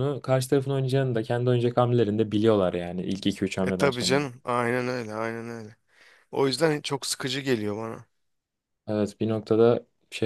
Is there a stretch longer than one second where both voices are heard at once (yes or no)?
no